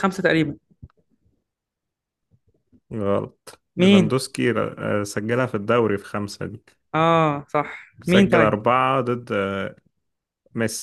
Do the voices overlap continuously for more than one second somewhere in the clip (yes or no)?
no